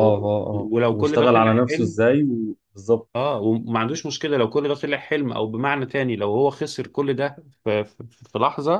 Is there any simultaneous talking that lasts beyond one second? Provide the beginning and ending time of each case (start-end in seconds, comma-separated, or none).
0.5-2.0